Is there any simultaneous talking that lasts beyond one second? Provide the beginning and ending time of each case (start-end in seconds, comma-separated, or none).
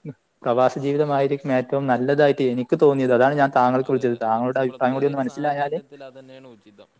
3.9-5.8